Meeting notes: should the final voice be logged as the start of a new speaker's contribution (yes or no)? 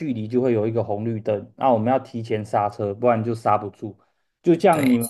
no